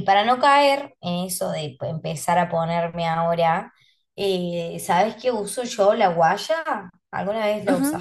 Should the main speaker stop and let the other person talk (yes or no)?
yes